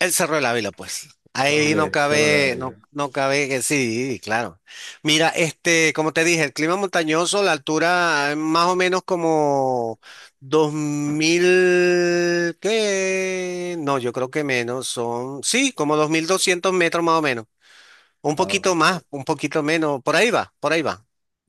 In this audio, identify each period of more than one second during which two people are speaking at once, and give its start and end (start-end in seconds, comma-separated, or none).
1.5-2.8